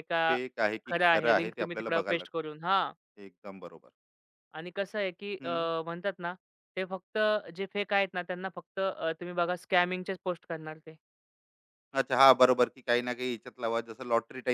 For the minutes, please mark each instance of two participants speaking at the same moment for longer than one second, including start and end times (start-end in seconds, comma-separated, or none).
0.9-2.5